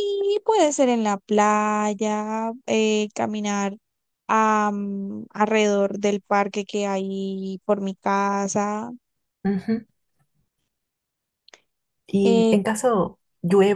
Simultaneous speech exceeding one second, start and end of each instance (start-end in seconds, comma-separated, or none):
none